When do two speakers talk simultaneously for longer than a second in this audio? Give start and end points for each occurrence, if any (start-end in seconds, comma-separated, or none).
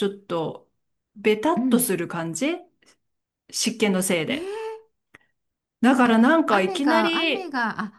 6.0-7.5